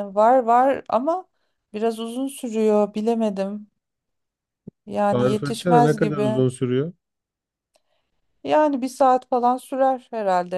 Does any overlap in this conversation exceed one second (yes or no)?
yes